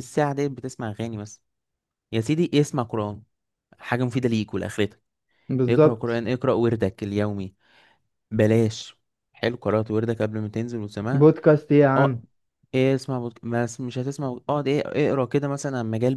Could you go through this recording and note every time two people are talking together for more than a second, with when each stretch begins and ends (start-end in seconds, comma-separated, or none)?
none